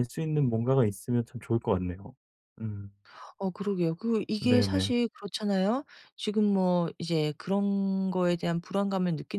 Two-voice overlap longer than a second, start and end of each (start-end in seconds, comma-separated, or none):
none